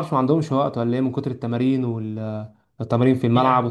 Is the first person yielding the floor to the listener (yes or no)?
yes